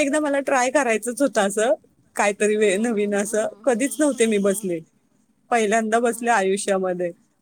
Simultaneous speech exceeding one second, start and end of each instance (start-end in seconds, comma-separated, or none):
2.7-4.8